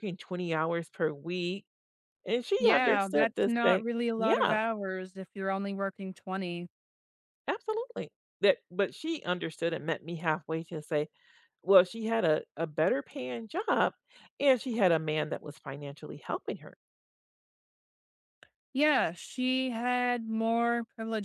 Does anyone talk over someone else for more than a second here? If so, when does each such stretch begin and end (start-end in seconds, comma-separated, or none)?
2.6-4.6